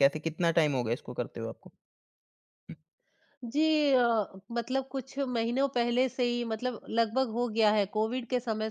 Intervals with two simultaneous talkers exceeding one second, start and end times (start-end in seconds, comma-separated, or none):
none